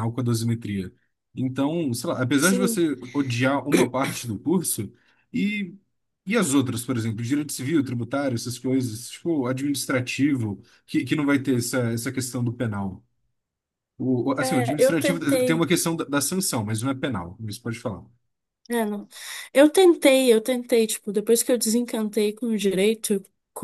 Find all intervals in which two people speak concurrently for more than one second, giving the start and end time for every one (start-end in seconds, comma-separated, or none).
14.4-15.7